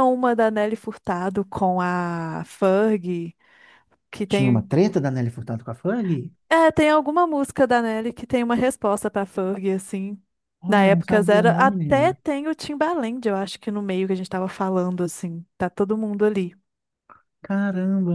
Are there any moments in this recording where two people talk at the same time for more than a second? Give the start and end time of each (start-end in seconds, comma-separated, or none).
10.7-12.2